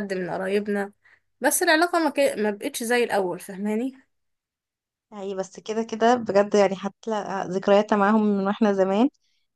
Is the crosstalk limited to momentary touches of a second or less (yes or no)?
yes